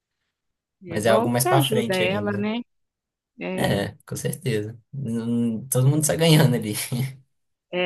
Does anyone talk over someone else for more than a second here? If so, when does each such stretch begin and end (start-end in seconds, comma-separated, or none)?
0.9-2.5